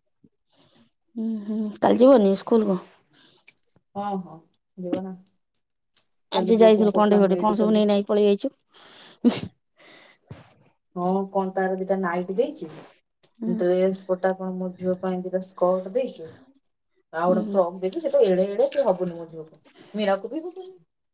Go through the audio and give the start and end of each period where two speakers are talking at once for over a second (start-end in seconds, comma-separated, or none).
6.4-7.8